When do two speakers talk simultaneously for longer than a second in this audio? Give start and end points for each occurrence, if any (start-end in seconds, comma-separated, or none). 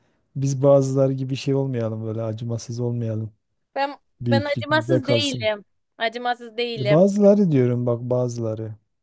4.2-5.5